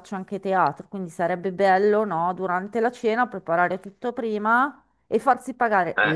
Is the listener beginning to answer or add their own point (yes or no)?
no